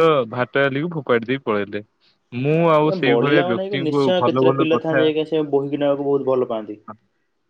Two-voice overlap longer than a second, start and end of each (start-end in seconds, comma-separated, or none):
2.7-5.0